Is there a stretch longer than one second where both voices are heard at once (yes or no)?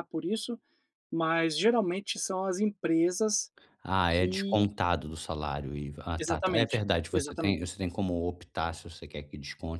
yes